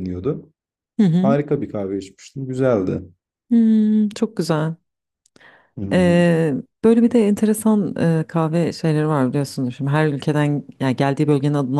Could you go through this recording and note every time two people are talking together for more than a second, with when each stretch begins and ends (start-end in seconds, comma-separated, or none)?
none